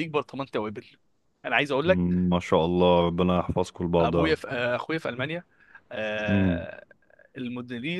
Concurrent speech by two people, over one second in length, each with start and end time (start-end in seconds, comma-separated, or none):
none